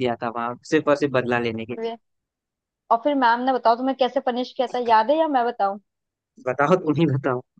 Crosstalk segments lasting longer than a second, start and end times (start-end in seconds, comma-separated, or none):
none